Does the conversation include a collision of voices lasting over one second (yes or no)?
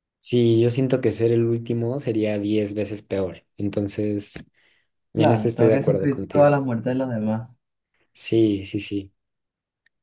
yes